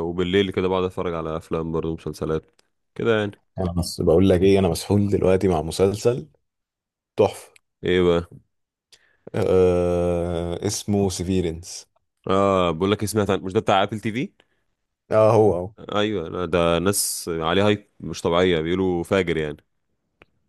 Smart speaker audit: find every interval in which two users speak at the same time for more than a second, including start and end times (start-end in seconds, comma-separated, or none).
none